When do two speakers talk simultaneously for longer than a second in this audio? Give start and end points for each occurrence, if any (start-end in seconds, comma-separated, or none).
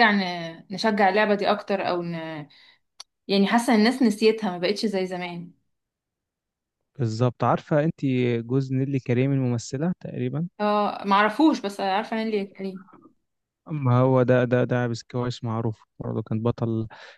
none